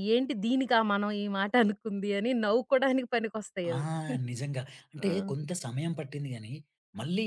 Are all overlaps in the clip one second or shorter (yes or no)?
yes